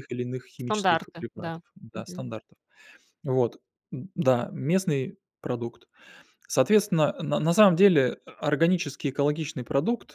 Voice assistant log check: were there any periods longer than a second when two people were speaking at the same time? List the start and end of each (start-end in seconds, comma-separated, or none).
0.6-2.2